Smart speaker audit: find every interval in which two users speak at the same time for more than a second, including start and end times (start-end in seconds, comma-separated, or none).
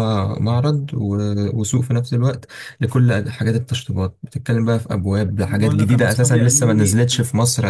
5.4-7.0